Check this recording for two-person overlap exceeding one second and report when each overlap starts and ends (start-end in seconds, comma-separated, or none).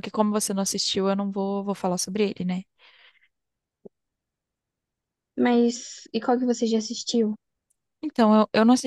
none